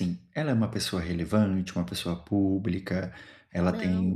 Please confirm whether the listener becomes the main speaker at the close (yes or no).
no